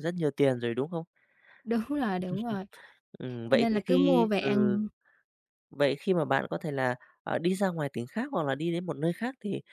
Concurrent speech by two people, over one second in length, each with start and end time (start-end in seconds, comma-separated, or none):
3.5-4.8